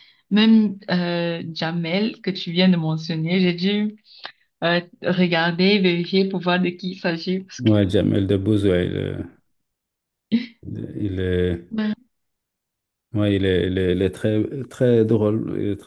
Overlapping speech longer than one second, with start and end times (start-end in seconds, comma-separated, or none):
none